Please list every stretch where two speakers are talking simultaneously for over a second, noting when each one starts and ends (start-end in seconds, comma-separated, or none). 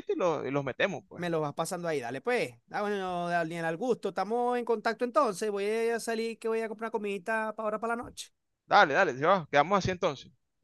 none